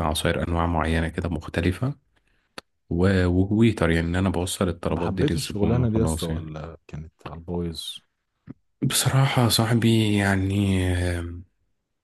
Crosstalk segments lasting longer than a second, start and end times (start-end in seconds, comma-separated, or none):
4.9-6.5